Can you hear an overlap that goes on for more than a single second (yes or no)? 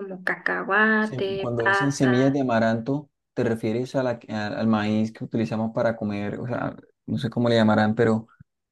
yes